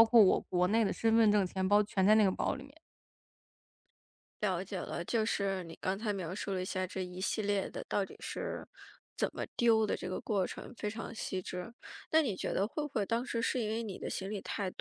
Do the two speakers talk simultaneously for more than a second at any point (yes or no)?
no